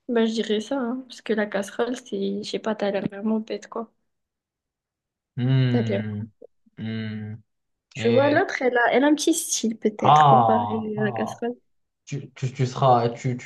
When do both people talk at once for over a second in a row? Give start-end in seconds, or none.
10.0-11.4